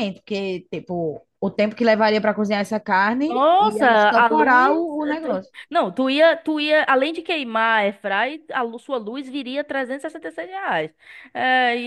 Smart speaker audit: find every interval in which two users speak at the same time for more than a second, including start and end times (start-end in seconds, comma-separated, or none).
3.3-5.5